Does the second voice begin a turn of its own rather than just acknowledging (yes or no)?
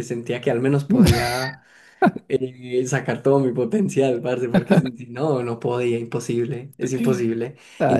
no